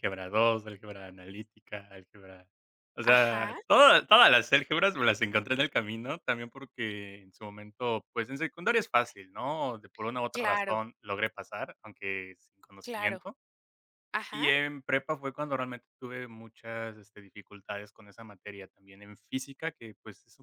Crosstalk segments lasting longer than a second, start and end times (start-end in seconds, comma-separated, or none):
none